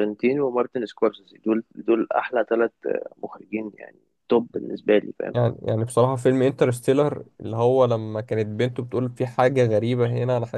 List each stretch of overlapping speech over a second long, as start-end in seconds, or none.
none